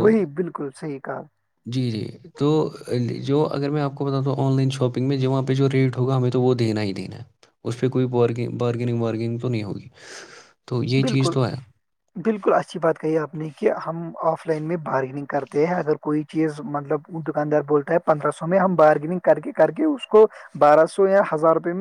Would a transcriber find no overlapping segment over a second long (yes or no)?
yes